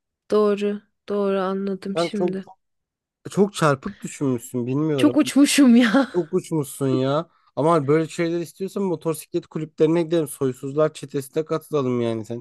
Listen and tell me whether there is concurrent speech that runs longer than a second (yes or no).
no